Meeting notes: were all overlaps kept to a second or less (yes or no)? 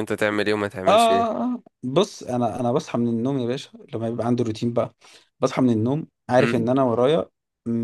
yes